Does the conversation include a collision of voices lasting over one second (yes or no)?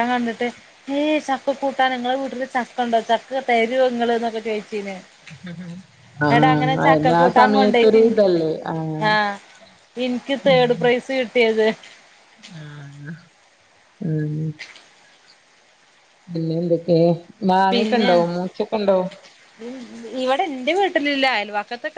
yes